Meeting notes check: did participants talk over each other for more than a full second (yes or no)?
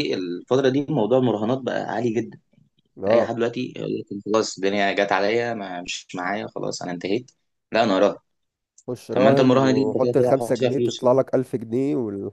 yes